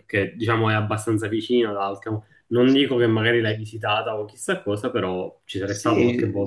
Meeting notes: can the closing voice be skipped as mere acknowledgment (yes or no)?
no